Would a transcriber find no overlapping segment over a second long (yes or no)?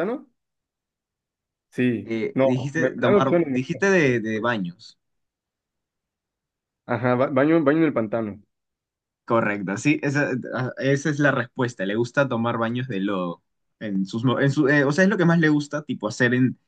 no